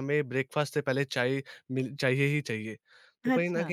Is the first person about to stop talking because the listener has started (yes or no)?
no